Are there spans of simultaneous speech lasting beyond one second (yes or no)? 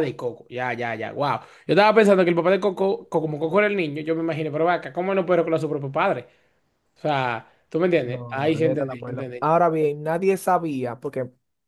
yes